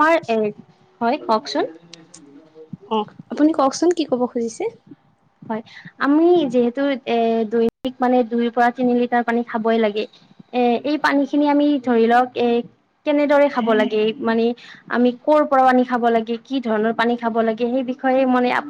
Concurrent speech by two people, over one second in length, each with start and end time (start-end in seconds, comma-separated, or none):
none